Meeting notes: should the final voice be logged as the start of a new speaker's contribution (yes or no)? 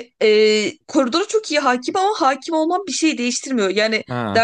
no